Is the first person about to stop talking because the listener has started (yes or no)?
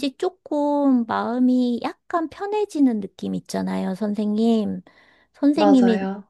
no